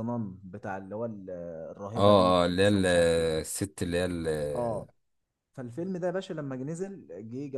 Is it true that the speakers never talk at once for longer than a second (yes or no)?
no